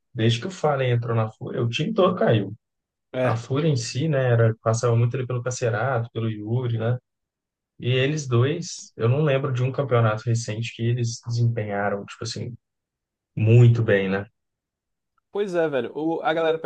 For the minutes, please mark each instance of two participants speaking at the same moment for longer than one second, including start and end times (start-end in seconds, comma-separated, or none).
none